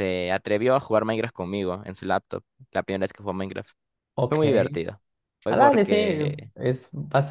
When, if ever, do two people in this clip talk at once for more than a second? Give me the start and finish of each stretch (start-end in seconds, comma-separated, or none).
none